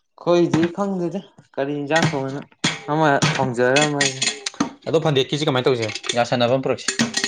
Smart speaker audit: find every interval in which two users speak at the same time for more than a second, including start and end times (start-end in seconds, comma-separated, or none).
none